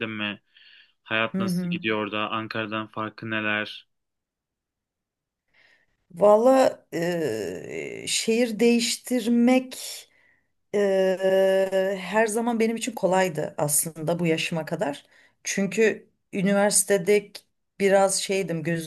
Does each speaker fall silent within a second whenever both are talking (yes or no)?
yes